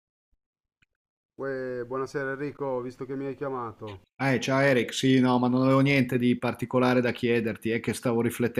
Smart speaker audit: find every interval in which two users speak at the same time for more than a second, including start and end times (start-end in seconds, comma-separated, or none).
none